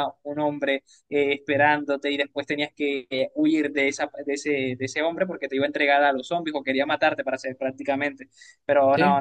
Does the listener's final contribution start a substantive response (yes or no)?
no